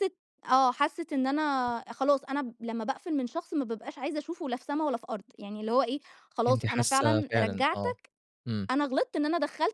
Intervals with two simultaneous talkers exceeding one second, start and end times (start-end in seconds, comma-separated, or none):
6.5-7.9